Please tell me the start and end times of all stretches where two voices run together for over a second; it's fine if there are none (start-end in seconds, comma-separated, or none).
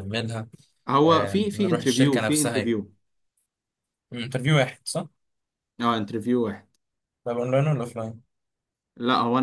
1.0-2.8